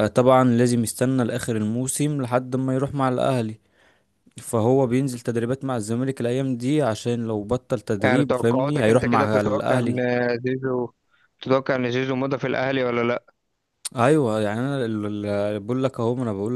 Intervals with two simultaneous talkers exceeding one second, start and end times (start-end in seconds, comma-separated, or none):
8.0-9.9